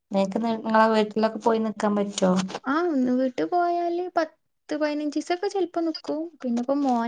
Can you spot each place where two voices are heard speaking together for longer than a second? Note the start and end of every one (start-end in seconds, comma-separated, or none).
none